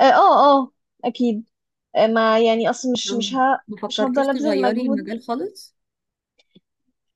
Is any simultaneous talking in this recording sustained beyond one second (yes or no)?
yes